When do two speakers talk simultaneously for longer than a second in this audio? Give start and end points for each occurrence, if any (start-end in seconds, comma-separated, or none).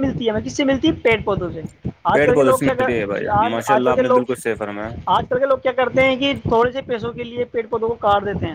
2.1-4.4